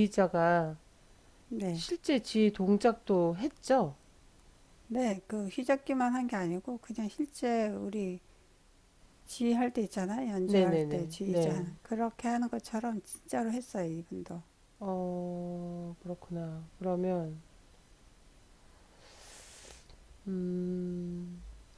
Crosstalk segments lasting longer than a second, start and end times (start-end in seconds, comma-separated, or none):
10.5-11.7